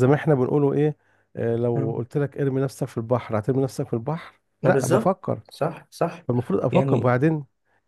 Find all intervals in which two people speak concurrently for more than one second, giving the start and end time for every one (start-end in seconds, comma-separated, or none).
none